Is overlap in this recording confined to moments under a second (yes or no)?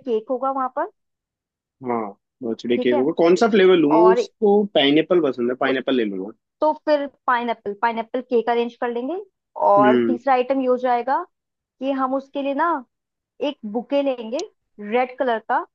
yes